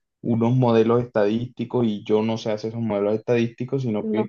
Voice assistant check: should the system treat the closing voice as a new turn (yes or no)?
no